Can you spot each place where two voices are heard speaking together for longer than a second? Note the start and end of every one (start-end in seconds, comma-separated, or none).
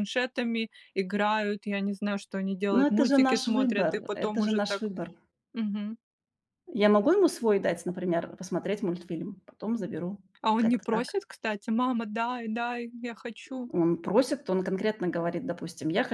2.8-4.9